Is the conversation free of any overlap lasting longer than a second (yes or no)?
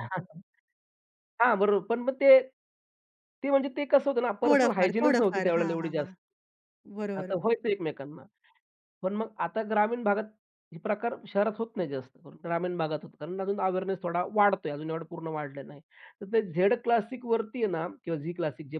no